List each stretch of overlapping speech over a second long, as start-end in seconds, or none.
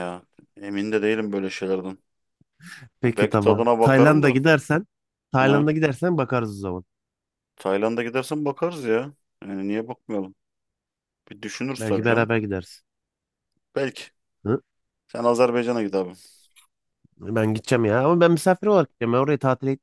3.0-4.4